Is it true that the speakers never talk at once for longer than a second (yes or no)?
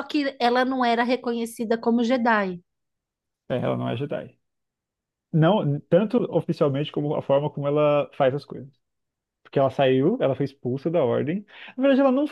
yes